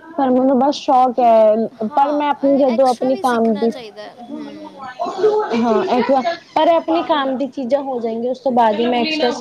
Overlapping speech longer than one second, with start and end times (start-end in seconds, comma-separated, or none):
1.9-3.7